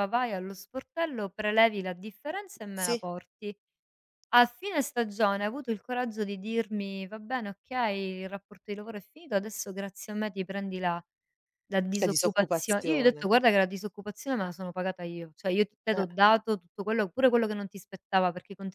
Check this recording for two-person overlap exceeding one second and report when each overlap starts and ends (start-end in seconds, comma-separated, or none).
12.0-13.3